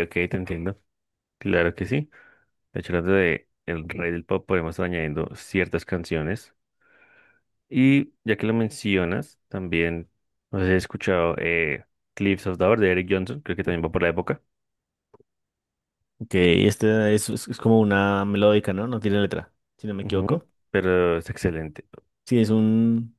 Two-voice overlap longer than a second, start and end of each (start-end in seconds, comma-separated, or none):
none